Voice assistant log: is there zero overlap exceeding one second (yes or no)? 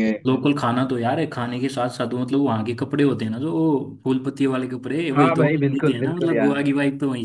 no